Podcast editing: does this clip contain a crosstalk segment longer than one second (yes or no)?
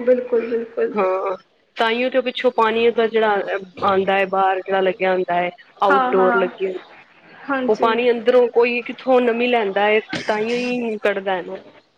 no